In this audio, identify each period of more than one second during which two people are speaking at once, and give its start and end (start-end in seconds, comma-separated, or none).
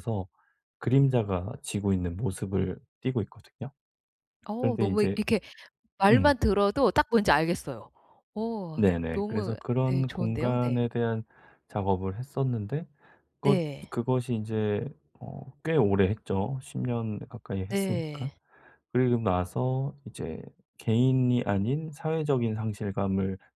8.8-10.8